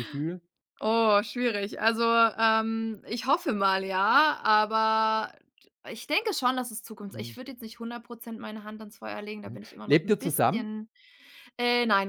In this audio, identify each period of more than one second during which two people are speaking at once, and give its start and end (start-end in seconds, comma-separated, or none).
9.4-10.7